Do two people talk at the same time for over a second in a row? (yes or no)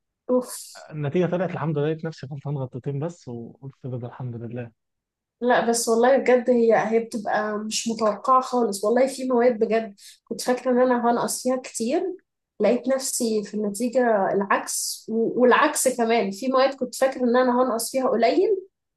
no